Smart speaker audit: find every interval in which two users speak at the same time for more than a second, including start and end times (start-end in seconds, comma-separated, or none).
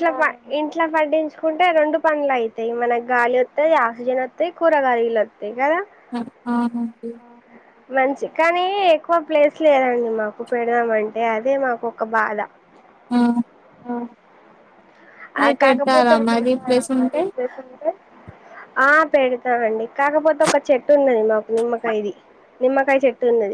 15.4-17.2